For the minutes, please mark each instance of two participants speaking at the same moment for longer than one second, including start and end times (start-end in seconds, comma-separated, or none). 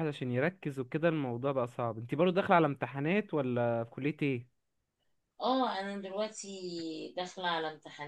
none